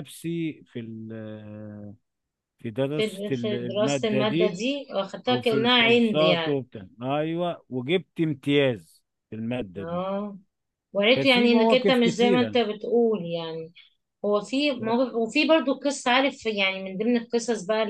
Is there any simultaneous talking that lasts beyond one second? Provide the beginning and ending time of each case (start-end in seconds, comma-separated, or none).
3.0-4.6, 5.3-6.6, 11.2-12.6